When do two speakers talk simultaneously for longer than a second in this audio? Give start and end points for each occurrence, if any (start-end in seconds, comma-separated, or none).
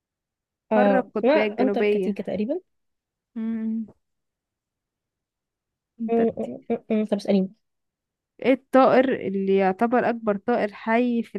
0.7-2.2